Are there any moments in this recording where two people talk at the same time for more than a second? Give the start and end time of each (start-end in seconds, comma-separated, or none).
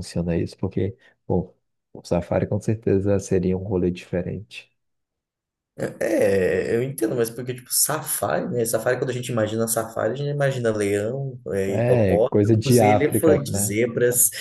11.7-13.7